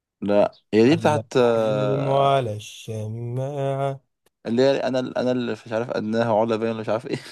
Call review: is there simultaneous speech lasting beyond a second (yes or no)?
yes